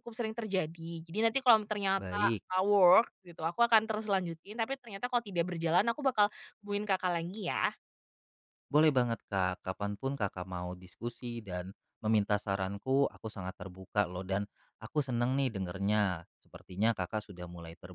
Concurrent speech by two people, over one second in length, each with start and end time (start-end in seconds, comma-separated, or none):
none